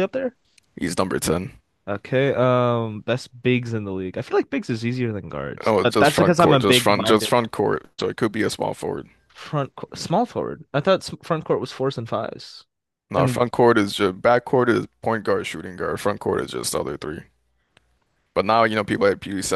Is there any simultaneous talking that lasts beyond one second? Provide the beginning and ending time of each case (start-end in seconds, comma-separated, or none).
5.7-7.3